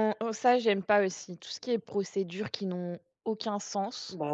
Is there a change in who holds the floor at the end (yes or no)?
no